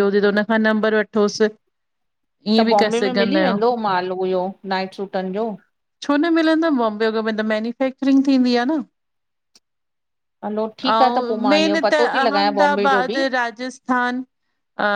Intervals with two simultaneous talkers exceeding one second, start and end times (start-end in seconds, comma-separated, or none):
10.9-13.2